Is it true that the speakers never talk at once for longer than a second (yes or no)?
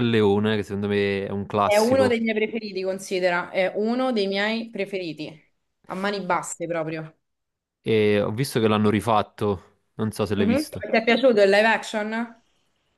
yes